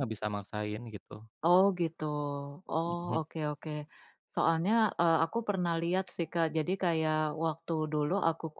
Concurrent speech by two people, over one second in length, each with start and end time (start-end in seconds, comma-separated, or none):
none